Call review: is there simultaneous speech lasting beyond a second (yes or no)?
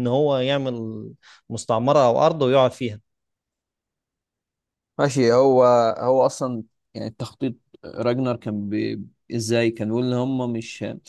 no